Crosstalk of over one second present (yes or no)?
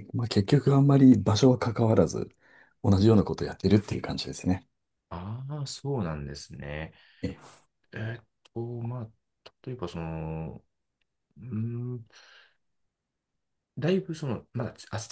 no